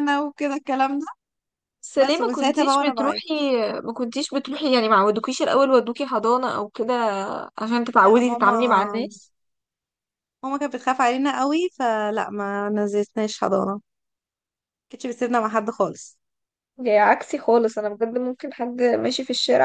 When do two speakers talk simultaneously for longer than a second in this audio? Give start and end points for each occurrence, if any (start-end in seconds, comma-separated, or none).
1.9-3.2